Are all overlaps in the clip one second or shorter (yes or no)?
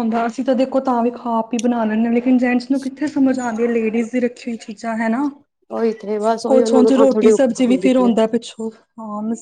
no